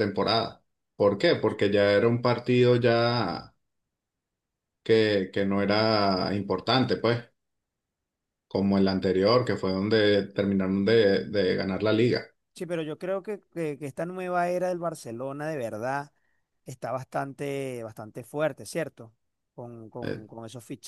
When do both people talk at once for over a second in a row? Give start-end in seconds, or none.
none